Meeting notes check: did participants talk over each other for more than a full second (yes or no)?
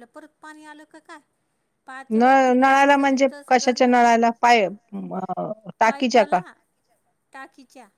yes